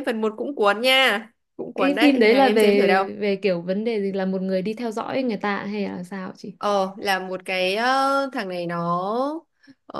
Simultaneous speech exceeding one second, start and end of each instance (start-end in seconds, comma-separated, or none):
1.8-3.0